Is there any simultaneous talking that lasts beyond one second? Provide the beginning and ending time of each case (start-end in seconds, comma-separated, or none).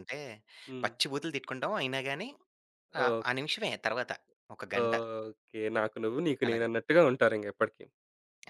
none